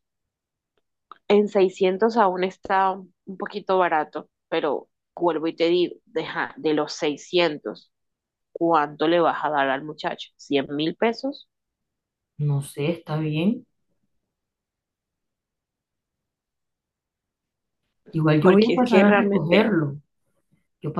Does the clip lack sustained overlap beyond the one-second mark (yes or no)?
no